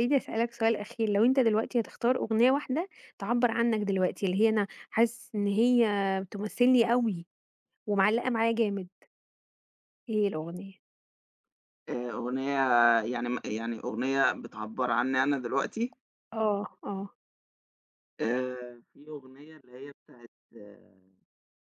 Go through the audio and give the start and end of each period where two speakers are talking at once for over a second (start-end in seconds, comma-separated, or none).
none